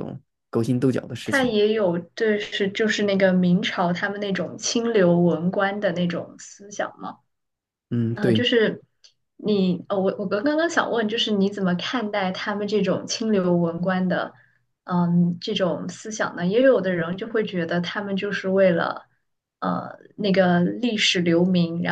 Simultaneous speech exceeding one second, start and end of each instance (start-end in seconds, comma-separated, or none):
none